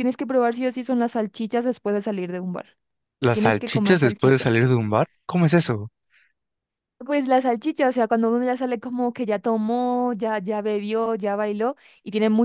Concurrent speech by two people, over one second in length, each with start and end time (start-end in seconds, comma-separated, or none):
3.3-4.5